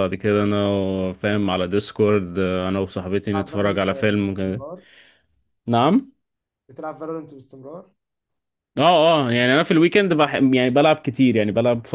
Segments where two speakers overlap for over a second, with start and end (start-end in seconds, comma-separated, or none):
3.3-4.6